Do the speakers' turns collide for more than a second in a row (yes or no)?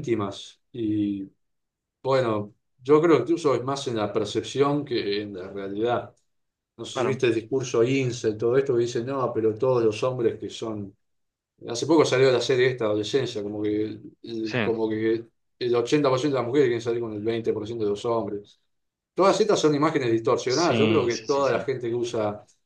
yes